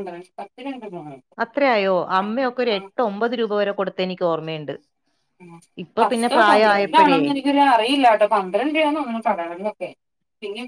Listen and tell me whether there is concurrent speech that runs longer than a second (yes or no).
no